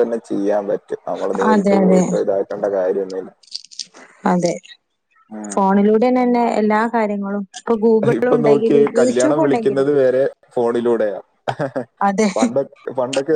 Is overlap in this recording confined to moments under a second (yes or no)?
no